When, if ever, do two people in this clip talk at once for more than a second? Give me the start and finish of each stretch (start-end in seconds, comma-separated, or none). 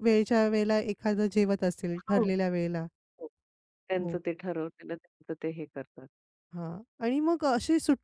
none